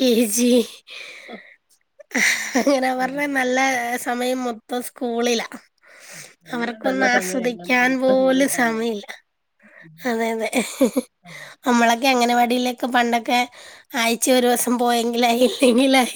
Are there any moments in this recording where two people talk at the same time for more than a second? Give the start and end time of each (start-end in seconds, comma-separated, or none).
6.5-9.0